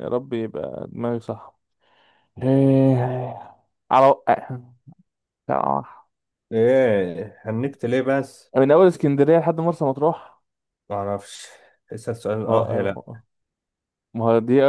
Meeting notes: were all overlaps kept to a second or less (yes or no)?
yes